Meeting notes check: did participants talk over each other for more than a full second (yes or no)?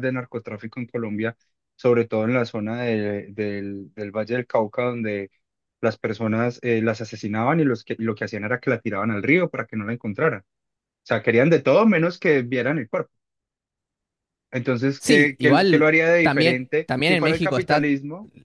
yes